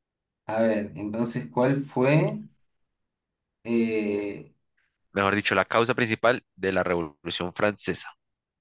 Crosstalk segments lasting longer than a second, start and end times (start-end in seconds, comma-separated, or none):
none